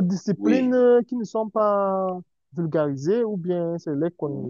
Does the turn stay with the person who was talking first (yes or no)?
no